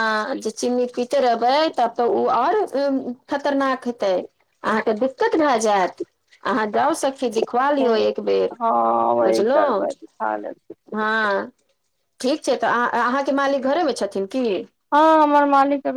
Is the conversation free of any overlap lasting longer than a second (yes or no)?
yes